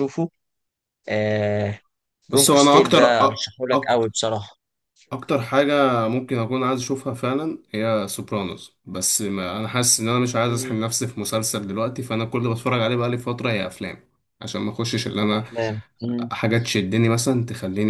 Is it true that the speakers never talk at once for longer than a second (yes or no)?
no